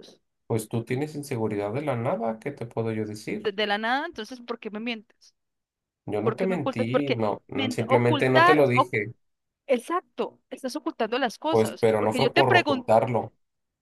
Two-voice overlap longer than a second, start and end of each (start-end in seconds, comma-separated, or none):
6.2-9.0, 11.5-12.9